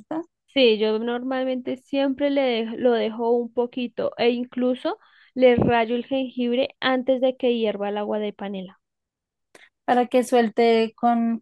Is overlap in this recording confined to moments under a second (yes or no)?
yes